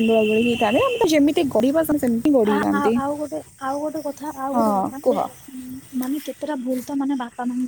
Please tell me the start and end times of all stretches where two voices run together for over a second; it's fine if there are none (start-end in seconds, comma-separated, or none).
none